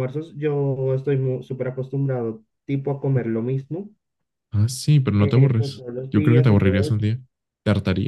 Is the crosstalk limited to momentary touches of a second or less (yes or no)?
no